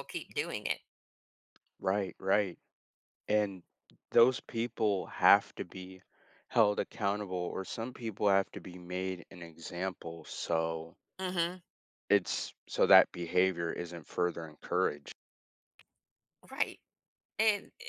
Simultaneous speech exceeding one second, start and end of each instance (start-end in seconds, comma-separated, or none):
none